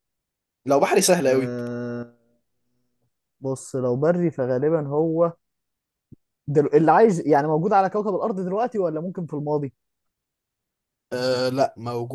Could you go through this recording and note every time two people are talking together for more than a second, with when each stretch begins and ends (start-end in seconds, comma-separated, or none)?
none